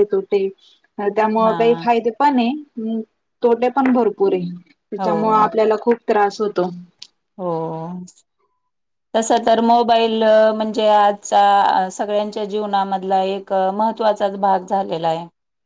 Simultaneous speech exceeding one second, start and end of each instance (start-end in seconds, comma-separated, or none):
none